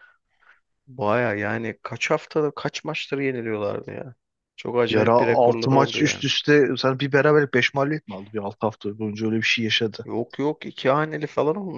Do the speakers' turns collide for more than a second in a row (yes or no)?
yes